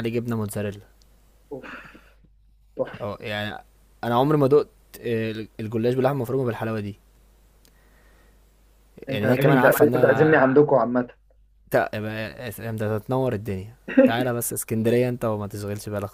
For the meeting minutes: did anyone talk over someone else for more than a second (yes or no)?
yes